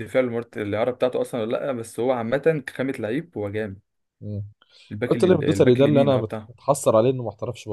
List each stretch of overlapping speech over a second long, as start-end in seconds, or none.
5.1-6.5